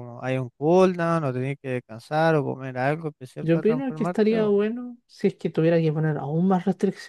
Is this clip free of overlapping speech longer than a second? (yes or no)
no